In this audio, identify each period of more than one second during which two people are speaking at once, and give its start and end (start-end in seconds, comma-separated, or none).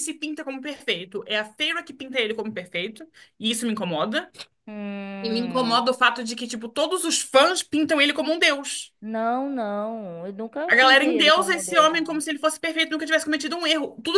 10.7-12.2